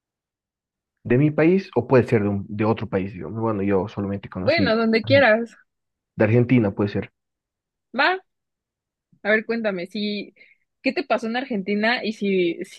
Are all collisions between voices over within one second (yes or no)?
yes